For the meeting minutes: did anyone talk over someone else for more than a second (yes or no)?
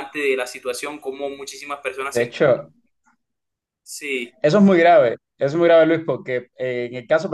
no